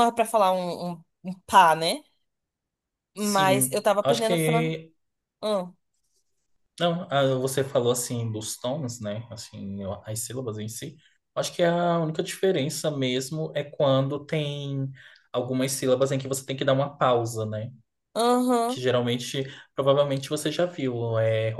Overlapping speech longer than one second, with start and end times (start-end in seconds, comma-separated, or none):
3.2-4.7